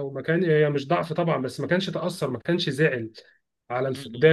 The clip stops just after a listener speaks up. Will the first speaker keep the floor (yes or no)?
yes